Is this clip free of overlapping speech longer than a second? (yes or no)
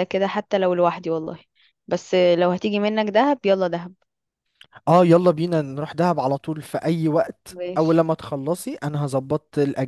yes